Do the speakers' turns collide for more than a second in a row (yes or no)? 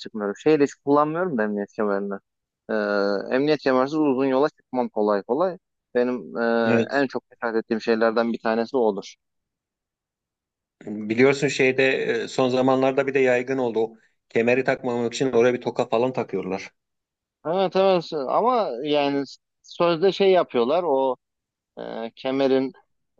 no